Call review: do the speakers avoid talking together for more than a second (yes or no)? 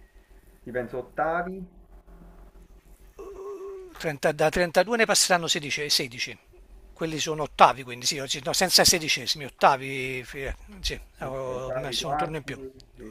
no